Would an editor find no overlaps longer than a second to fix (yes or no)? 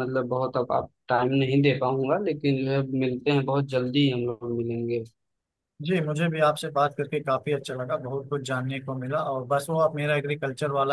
yes